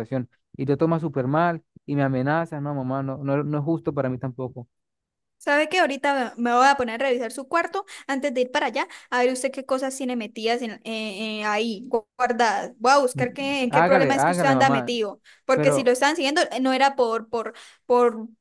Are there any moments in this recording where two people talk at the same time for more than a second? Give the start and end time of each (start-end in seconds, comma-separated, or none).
13.1-14.9